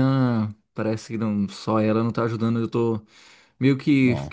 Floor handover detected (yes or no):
no